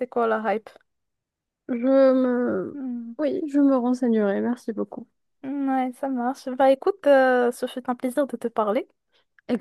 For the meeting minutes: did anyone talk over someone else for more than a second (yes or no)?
no